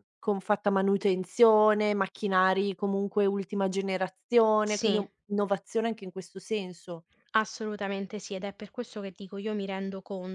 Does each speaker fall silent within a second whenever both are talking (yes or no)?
yes